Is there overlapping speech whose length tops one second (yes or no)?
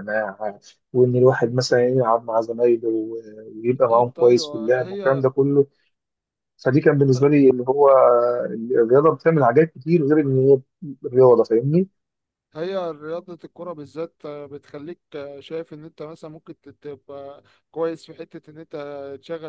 yes